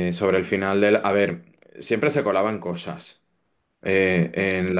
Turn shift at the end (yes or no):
no